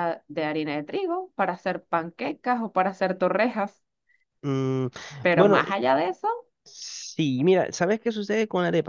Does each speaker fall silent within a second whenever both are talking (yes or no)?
yes